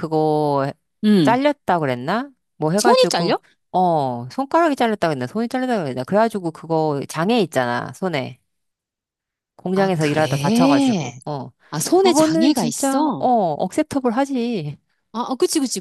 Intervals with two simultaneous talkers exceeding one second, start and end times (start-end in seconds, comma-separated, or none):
9.8-11.2, 12.0-13.3